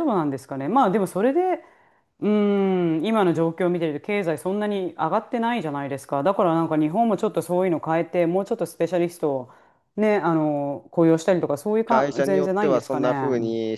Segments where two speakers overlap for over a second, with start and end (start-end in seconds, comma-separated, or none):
11.8-13.1